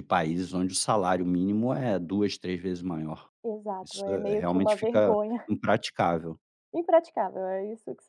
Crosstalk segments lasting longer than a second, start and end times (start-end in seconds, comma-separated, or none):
3.8-5.5